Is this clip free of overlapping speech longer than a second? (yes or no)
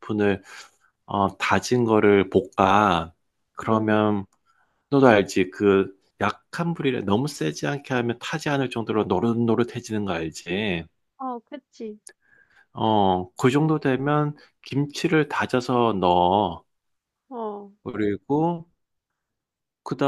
yes